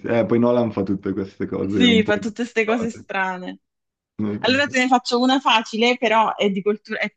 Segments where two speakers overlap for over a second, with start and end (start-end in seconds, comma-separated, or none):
1.6-3.1